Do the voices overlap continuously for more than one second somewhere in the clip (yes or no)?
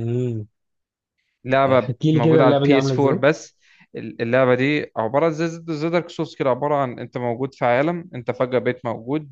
yes